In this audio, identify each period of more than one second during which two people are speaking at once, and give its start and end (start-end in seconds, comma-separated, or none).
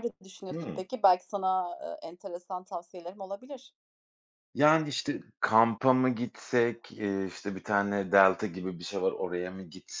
none